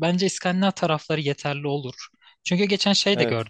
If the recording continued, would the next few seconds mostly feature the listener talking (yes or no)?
no